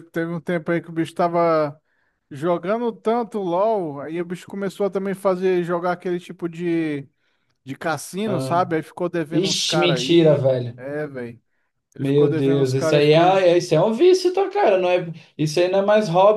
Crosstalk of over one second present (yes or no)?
yes